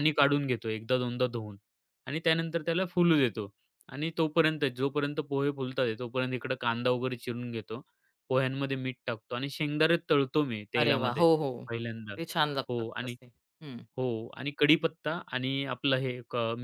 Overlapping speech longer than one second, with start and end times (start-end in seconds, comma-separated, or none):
none